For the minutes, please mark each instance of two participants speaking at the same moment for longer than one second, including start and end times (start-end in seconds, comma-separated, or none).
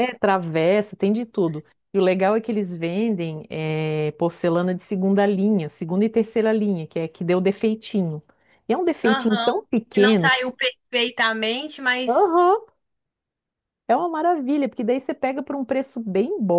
9.0-10.6